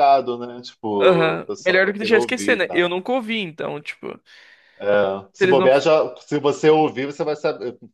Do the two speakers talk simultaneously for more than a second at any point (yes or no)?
yes